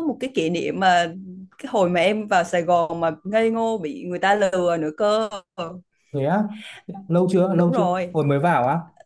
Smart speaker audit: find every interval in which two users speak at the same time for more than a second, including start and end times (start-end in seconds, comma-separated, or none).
none